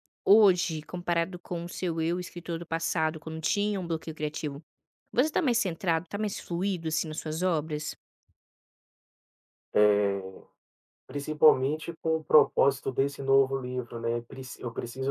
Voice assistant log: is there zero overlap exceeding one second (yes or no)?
yes